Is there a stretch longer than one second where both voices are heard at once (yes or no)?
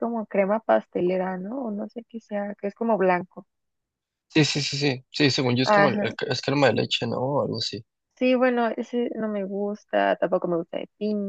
no